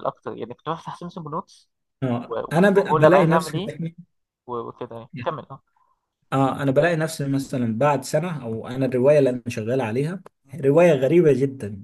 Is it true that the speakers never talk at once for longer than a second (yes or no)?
no